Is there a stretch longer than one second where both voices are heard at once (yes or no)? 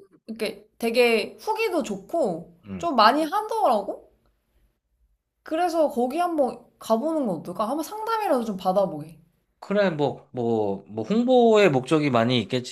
no